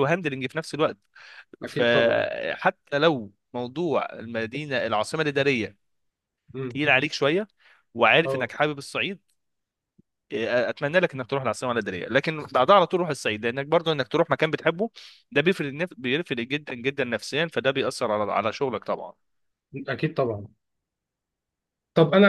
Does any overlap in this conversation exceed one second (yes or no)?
no